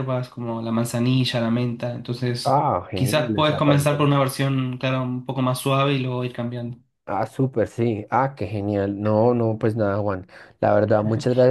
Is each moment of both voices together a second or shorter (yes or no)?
no